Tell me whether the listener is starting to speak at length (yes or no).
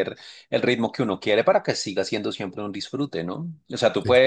no